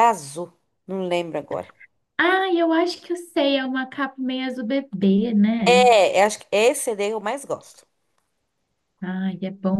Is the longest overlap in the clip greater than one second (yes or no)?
no